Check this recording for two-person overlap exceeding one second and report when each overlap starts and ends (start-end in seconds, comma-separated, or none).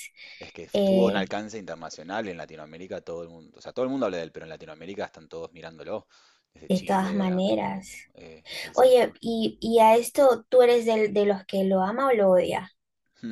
6.7-7.9